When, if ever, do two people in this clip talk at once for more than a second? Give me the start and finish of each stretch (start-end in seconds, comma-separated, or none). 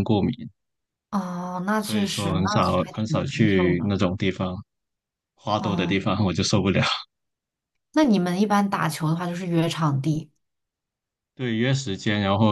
1.8-3.9